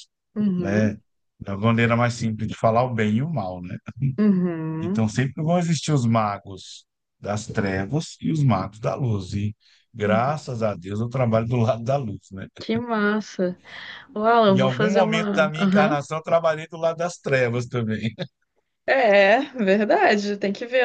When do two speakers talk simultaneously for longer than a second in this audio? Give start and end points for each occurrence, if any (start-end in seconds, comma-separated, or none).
14.5-16.0